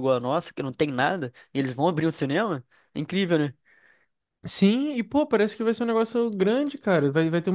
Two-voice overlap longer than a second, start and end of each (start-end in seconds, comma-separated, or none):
none